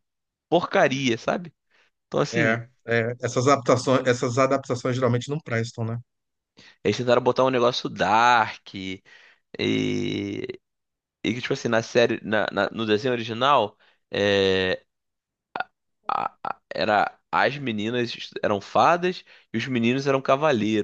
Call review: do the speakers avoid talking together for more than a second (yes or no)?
yes